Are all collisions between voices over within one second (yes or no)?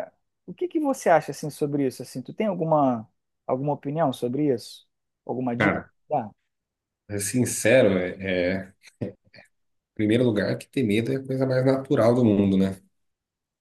yes